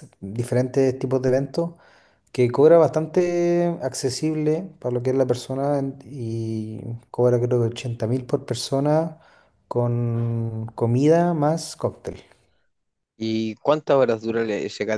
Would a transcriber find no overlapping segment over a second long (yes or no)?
yes